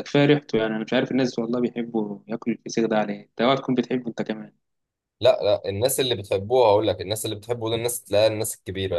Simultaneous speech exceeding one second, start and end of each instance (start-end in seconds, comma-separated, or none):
none